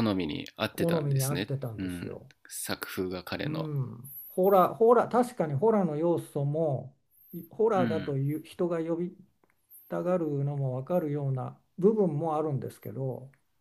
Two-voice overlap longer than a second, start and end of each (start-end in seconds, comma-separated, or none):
0.7-2.3